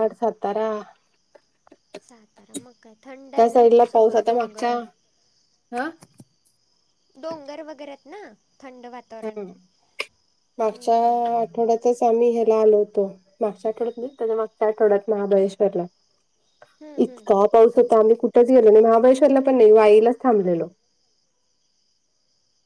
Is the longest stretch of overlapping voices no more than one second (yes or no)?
no